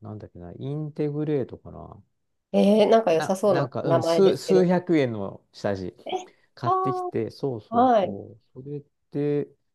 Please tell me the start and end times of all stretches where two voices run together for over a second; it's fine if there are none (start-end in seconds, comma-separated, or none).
3.1-4.7